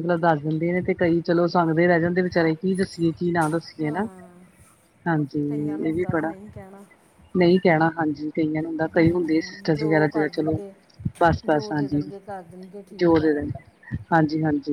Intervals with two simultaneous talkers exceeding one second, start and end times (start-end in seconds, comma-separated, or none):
8.9-10.6